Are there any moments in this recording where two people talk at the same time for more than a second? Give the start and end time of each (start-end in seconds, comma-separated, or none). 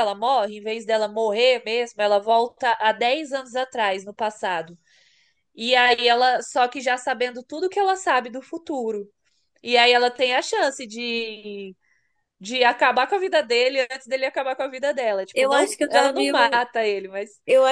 15.3-16.6